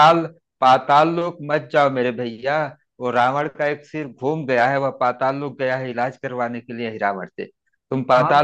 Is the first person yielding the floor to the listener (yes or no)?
no